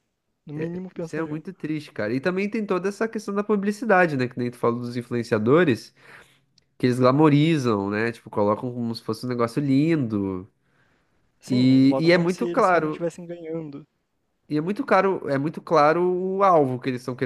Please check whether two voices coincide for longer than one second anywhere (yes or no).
yes